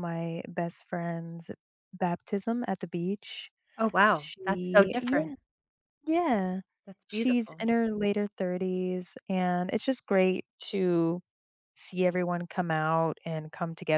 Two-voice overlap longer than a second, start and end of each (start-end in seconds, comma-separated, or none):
4.1-5.3